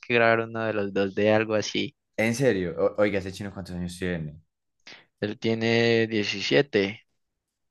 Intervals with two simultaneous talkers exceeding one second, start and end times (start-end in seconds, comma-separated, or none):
none